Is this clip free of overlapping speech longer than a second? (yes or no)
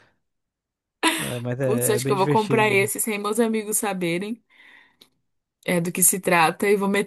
no